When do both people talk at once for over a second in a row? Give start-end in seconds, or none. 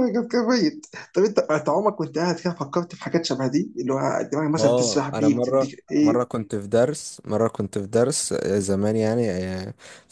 4.6-6.2